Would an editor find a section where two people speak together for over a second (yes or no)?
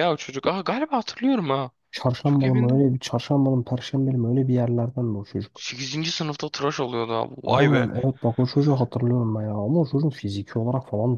no